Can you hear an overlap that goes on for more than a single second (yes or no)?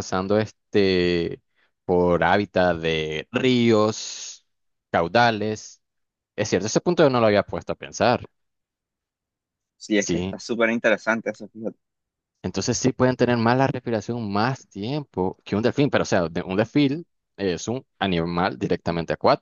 no